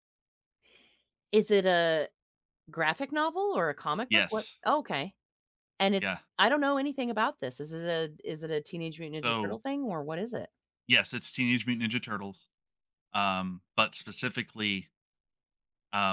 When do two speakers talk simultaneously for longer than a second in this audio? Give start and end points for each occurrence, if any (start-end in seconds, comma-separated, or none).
none